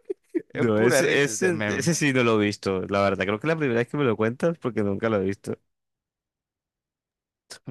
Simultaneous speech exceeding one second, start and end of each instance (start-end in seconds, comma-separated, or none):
0.5-1.9